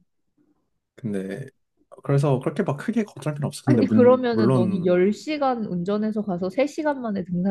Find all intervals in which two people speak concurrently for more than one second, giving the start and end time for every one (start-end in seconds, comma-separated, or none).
3.6-4.9